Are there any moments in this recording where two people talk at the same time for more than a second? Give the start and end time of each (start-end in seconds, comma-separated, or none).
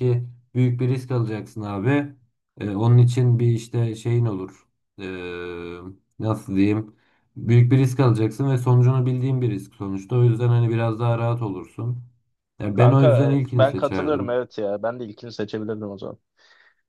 12.7-14.4